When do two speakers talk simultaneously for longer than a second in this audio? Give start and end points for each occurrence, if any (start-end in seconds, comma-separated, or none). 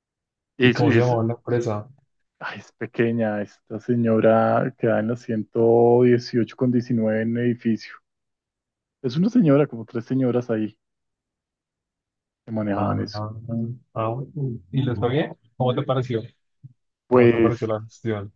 none